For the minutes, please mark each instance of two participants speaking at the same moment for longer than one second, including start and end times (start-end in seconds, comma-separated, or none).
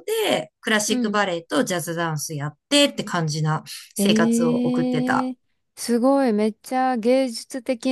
4.0-5.3